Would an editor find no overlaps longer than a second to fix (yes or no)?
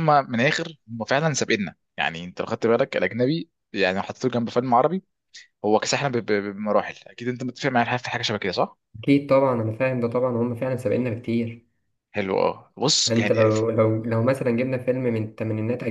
yes